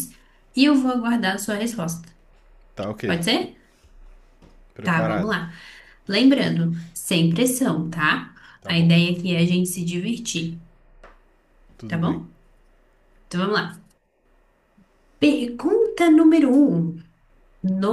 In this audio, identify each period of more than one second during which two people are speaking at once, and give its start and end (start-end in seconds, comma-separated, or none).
none